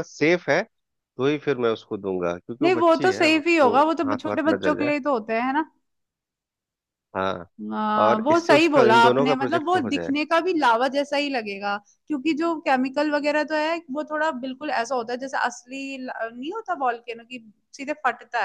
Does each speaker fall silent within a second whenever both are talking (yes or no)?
no